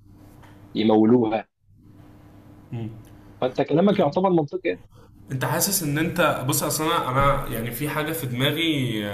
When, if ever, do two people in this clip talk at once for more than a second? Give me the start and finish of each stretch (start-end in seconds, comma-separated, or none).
none